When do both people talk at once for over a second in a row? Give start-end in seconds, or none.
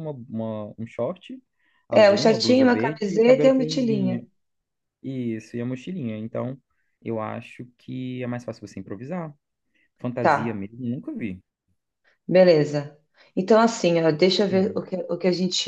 1.9-4.2